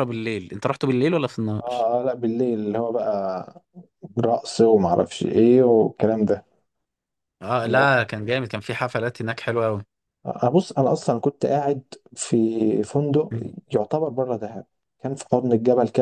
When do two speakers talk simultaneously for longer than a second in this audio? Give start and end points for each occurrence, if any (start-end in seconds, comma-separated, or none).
none